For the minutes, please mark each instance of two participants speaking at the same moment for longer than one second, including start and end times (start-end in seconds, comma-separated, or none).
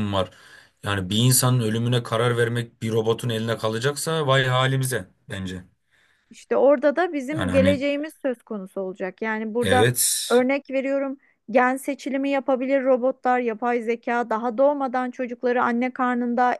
none